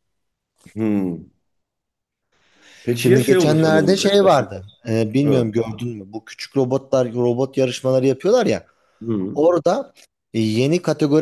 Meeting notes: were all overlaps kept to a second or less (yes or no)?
no